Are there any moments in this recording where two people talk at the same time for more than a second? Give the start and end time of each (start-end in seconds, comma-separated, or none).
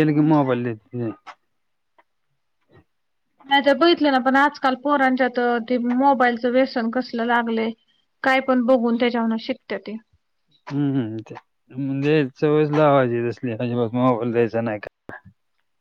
none